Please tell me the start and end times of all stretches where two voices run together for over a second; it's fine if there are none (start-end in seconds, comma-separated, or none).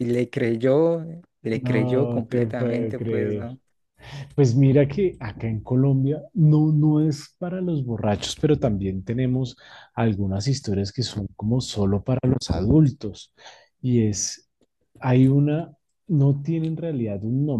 1.5-3.5